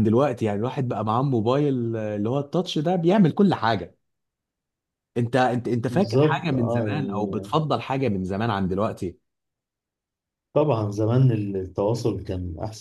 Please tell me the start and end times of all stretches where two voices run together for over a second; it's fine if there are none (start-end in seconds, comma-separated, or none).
5.9-7.6